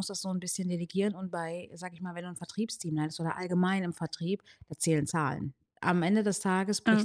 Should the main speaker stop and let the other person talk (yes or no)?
no